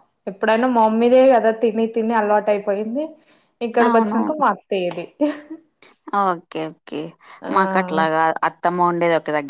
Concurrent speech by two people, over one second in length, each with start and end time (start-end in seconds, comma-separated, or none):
none